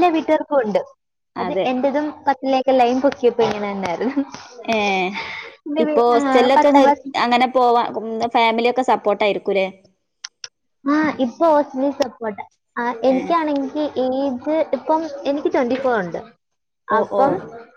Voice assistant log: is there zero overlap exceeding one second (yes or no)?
yes